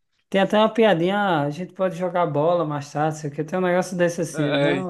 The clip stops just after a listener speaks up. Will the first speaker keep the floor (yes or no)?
yes